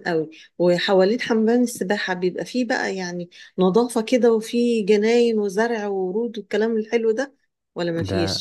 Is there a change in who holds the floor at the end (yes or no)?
yes